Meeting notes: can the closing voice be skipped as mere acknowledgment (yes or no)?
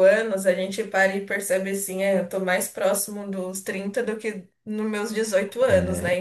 no